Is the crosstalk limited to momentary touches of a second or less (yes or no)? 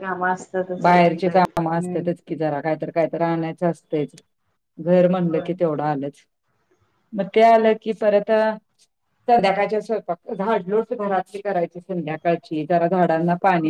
no